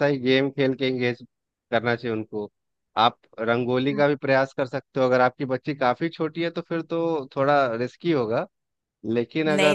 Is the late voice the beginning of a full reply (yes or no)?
yes